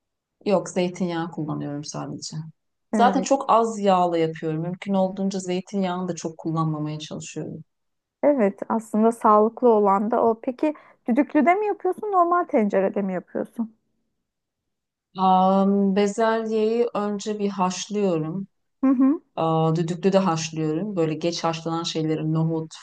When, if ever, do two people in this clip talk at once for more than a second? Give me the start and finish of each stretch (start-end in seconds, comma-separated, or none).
none